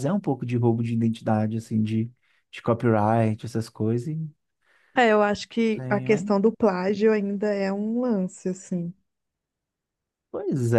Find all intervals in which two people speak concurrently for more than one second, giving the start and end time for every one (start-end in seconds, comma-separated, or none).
none